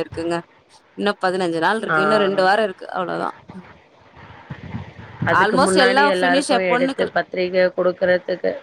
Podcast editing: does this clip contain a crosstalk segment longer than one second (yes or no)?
yes